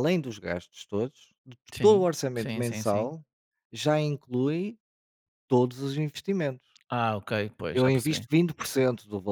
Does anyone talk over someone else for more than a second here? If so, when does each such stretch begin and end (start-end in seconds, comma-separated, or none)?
1.7-3.1